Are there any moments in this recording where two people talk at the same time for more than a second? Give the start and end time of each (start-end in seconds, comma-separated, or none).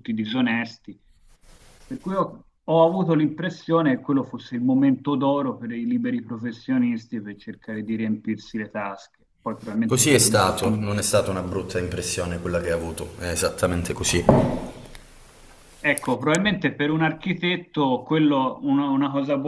9.8-11.1